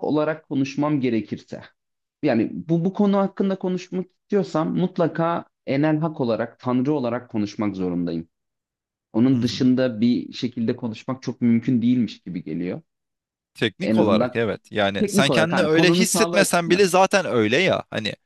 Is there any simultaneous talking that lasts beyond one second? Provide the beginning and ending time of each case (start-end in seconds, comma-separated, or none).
15.0-16.8